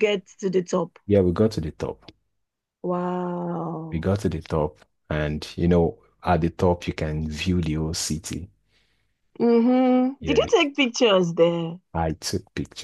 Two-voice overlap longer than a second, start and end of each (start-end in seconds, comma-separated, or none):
none